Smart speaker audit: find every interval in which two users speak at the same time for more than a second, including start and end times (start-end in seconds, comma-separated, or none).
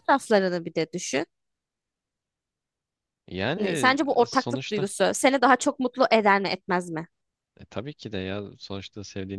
3.6-4.9